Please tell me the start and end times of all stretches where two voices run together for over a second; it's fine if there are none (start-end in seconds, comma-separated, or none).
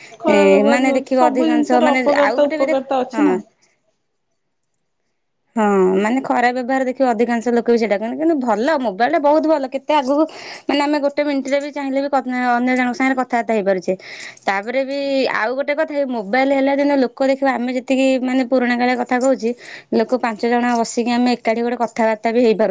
0.7-3.4